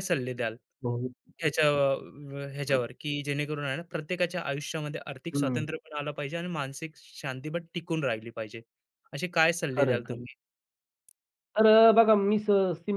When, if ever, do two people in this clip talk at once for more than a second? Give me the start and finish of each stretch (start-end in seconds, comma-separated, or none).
none